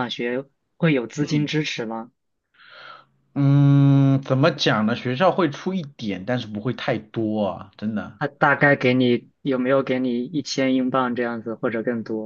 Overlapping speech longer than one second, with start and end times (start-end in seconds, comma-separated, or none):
none